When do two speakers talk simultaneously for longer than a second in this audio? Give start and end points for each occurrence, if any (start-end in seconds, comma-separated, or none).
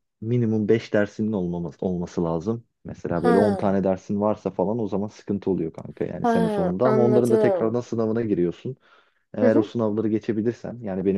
6.2-7.8